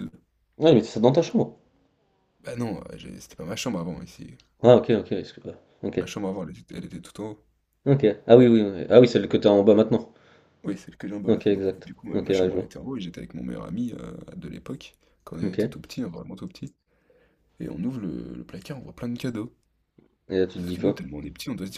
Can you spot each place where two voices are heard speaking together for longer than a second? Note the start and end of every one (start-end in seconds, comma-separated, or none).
11.3-12.7